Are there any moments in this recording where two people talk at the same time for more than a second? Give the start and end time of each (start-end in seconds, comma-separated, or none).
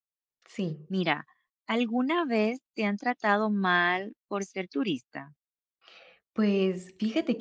none